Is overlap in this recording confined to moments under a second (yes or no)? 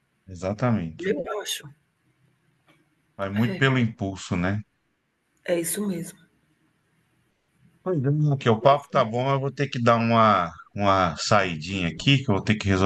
yes